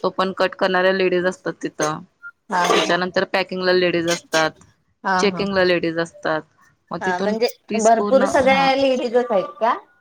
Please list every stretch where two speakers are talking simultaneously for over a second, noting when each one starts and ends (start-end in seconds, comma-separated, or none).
none